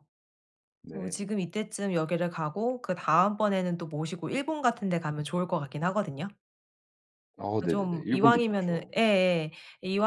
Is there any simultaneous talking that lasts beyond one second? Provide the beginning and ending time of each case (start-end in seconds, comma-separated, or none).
7.7-8.9